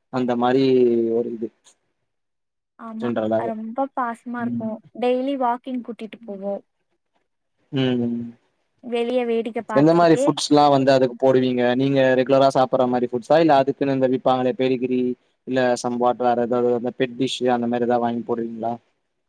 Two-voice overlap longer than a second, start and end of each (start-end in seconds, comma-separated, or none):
none